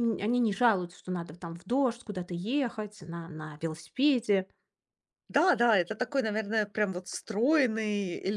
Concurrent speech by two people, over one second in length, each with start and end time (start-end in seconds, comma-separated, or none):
none